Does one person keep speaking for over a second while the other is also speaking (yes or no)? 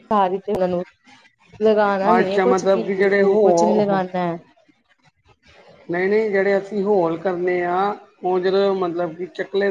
yes